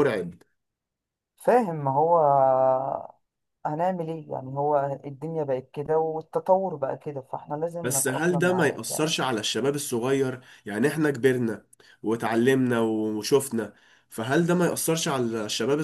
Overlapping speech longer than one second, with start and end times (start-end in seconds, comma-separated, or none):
7.8-9.1